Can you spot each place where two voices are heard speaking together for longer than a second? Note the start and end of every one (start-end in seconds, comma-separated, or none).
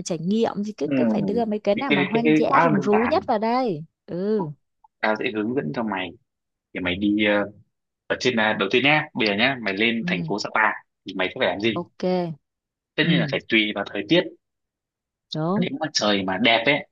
1.7-3.2